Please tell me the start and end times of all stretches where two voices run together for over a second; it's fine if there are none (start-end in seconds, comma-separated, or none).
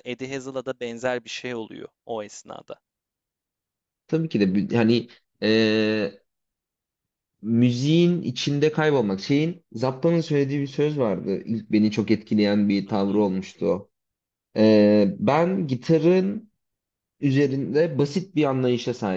none